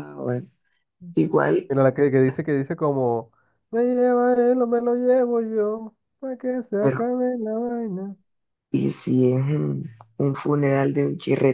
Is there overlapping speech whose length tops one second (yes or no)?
no